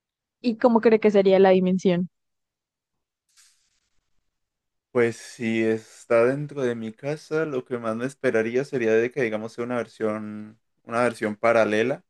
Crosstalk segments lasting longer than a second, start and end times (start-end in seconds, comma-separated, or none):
none